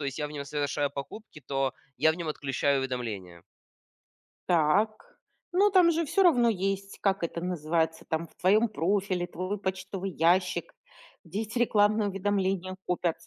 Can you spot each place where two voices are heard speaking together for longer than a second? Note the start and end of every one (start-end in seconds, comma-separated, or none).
none